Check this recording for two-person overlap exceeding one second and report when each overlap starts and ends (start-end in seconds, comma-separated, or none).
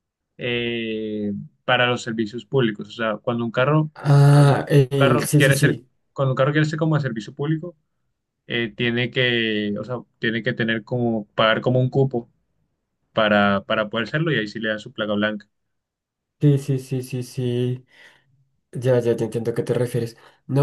4.3-5.9